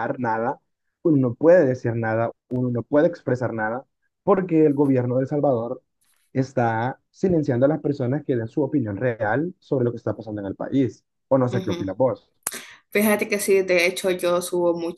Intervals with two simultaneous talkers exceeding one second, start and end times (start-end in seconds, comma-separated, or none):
none